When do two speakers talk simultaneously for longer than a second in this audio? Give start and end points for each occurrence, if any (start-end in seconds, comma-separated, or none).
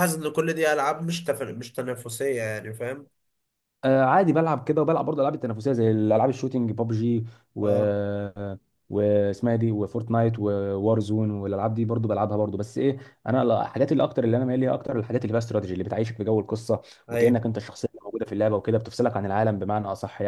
none